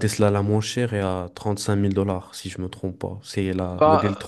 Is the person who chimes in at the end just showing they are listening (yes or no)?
no